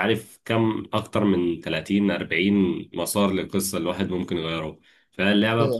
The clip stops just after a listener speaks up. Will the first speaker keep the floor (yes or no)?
yes